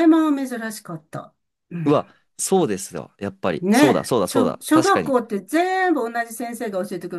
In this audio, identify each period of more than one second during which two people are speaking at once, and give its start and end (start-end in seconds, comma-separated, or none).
3.6-5.2